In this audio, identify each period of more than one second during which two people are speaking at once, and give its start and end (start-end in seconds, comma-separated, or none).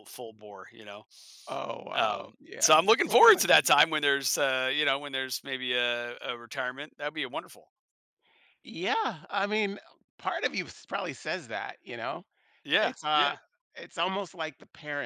1.9-3.6